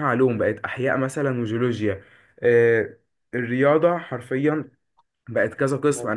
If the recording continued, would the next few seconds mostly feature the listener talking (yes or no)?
no